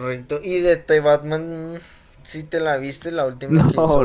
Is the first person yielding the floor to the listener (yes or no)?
yes